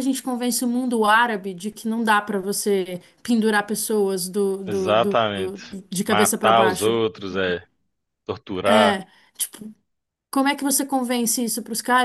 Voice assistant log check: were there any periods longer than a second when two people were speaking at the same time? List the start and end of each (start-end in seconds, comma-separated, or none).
4.7-7.0